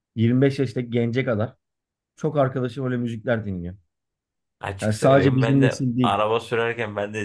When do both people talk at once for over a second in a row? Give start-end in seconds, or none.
4.8-6.2